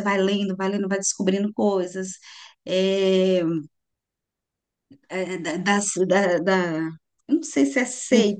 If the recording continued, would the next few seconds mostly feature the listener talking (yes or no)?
no